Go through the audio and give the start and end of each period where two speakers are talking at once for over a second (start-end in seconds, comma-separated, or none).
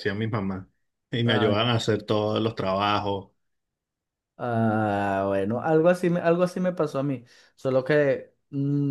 none